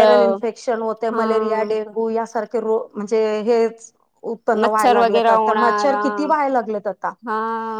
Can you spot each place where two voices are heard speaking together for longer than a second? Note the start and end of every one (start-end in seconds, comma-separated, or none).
4.6-6.0